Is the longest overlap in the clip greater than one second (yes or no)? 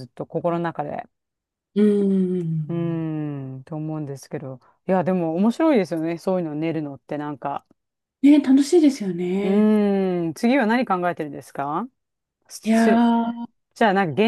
no